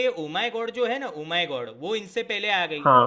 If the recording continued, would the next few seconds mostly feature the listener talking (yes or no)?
no